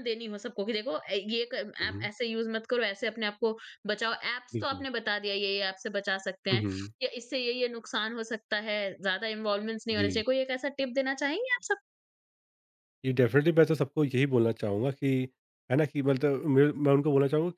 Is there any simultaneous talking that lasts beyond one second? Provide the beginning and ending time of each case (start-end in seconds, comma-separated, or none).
none